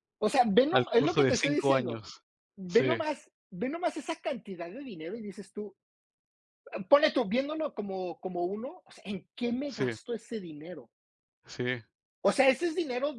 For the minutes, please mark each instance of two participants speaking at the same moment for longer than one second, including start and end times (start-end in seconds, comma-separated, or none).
0.7-2.0